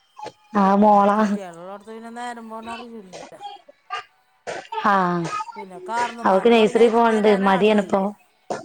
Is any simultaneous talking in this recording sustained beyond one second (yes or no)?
yes